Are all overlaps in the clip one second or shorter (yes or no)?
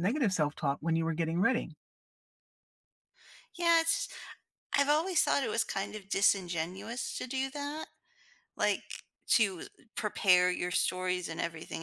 yes